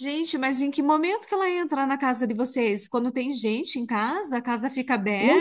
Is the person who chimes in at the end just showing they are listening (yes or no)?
no